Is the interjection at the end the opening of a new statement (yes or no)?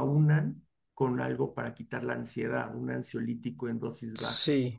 yes